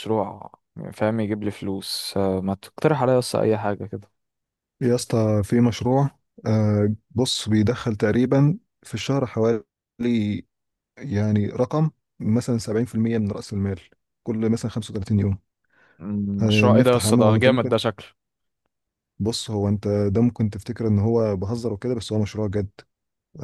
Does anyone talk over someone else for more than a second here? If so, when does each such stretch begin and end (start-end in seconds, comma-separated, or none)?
16.4-17.8